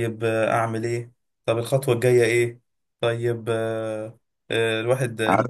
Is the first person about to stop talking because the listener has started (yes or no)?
no